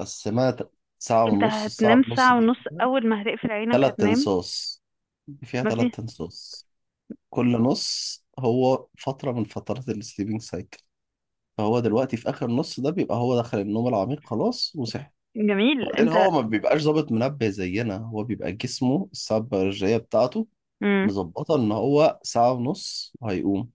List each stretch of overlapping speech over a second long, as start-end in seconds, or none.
1.3-2.8